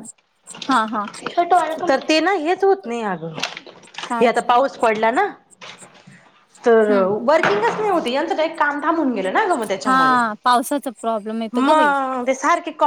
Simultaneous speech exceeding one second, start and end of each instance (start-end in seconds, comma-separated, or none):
none